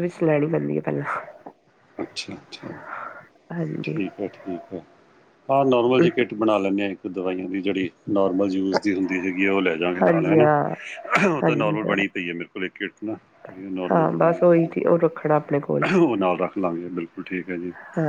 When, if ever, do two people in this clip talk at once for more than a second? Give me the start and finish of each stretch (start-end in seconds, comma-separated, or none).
13.9-15.8